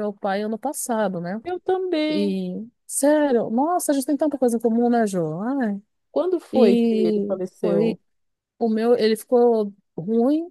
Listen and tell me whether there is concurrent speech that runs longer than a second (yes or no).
yes